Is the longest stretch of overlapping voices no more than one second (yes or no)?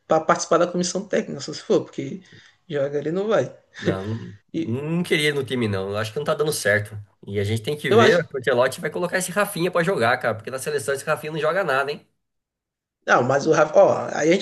yes